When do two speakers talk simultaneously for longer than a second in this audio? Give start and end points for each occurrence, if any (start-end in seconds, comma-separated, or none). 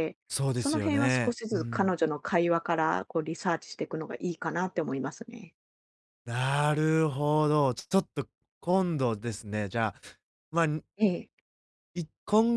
0.5-1.9